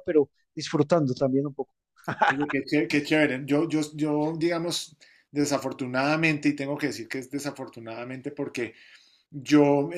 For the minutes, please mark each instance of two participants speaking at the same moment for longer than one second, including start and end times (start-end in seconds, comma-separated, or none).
none